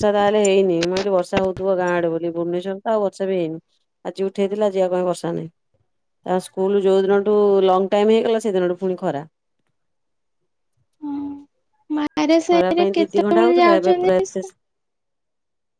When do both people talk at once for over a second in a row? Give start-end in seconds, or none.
12.6-14.5